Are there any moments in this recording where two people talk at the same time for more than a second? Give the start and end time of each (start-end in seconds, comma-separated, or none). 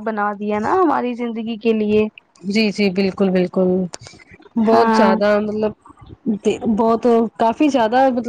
none